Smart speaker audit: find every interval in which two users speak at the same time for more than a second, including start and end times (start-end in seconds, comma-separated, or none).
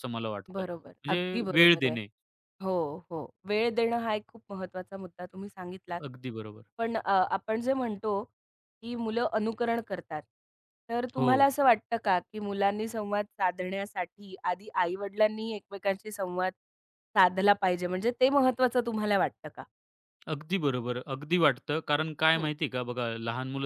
0.5-2.0